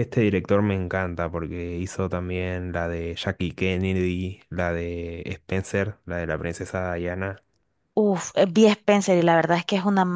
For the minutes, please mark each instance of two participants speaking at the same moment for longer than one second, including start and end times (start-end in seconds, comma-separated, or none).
none